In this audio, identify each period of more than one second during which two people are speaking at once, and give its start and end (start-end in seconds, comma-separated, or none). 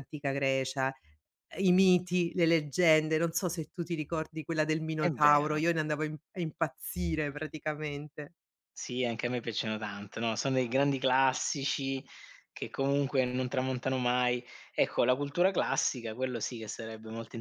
none